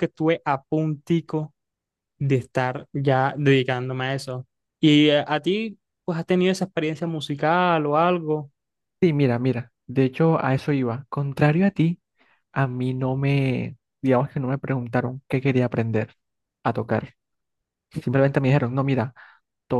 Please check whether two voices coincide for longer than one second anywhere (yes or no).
no